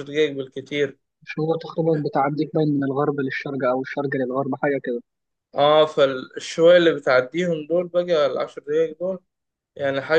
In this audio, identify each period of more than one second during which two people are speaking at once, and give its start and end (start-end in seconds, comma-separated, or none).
none